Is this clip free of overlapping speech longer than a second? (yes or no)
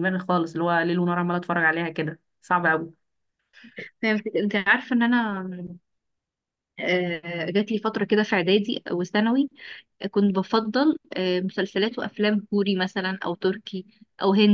yes